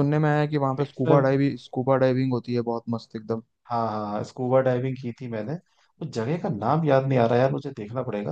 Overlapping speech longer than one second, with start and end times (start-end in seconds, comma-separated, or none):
none